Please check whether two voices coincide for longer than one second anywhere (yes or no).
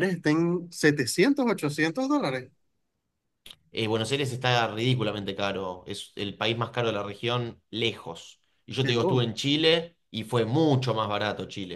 no